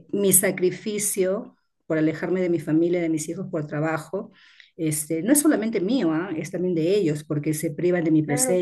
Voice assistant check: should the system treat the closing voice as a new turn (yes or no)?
no